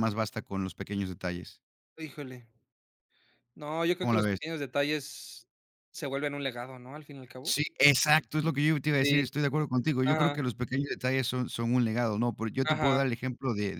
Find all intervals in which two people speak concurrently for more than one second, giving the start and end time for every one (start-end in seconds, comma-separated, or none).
none